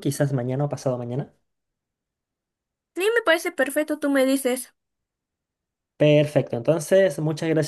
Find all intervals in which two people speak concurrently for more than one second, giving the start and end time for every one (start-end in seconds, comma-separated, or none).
none